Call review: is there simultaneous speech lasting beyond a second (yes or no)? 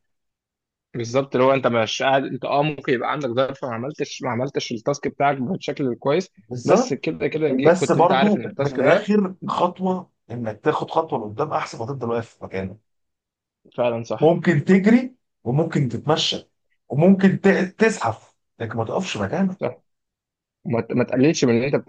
yes